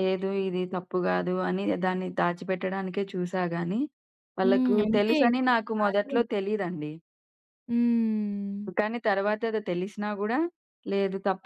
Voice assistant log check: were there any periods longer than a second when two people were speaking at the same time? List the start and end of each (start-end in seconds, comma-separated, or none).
4.4-6.2